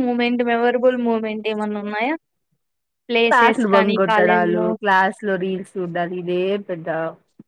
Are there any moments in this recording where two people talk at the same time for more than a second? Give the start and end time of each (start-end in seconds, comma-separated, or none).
3.3-4.7